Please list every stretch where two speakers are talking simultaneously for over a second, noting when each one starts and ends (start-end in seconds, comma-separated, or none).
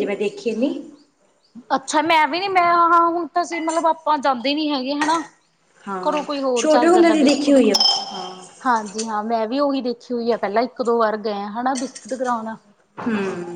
6.1-7.7